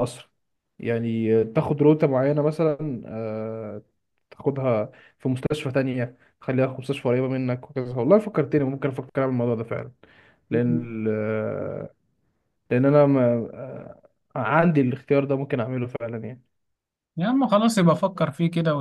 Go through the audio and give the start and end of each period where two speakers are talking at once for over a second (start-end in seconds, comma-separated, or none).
none